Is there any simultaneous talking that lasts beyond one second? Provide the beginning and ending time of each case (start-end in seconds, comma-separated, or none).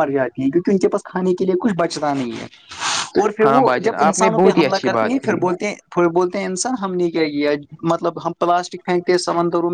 3.5-5.4